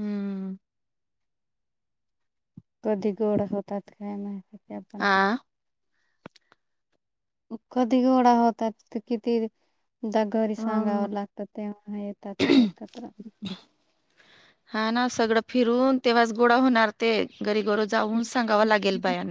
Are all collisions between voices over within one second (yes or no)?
yes